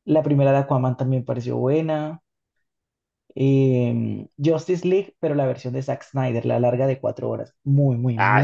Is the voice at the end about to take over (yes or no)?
yes